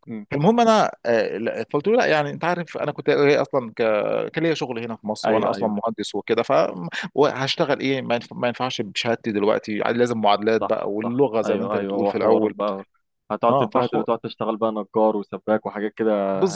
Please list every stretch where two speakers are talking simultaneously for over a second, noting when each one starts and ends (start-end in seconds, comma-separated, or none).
10.6-12.5